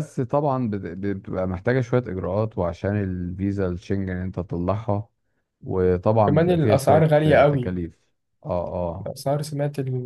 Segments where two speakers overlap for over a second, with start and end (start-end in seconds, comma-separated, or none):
6.2-7.8